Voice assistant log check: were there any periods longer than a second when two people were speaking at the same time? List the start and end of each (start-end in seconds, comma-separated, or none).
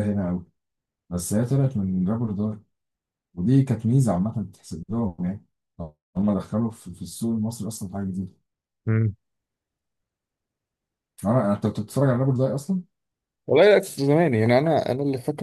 none